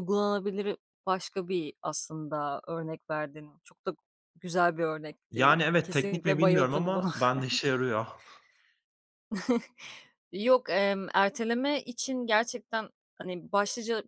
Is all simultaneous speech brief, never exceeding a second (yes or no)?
no